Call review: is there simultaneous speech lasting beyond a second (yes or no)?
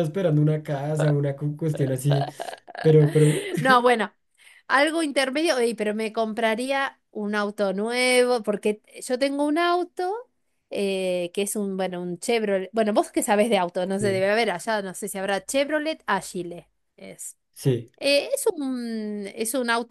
no